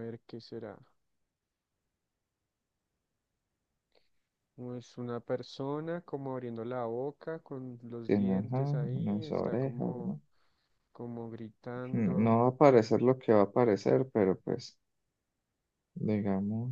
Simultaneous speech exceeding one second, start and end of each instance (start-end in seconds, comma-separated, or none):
8.1-10.2